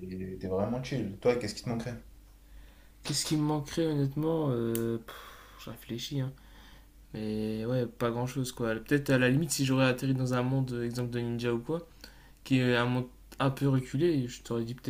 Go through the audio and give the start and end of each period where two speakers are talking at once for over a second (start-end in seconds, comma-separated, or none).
none